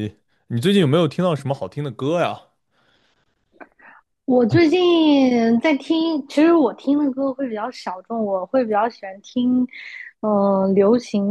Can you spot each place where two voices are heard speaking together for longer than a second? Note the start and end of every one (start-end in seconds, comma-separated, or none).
none